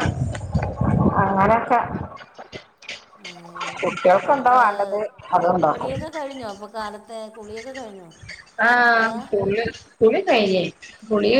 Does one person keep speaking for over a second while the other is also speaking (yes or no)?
no